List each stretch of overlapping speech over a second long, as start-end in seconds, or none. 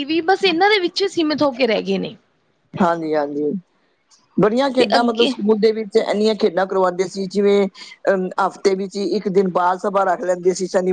none